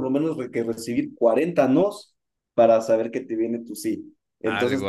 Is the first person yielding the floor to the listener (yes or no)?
no